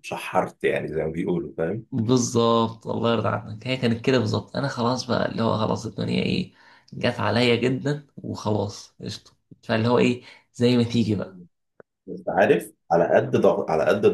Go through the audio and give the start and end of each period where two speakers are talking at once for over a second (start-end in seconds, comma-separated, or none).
none